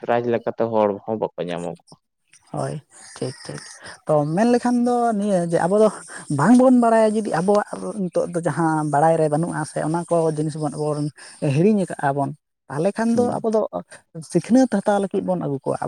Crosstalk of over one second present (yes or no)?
no